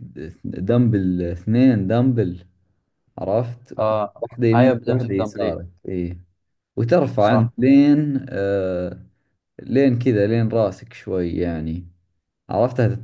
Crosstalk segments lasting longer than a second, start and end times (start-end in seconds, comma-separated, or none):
4.2-5.6